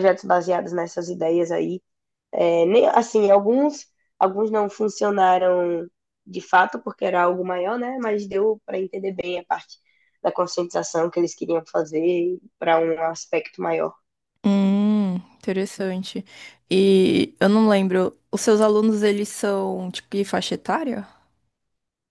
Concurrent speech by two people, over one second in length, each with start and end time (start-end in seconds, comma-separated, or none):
none